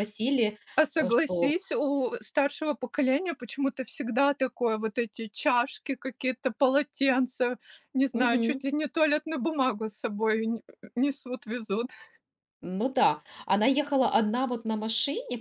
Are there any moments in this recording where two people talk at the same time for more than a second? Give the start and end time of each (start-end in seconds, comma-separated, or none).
none